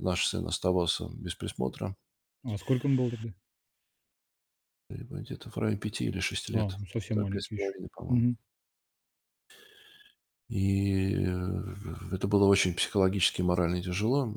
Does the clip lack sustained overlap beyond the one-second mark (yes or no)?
no